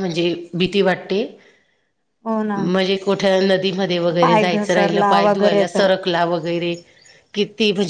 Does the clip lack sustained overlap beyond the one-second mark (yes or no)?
no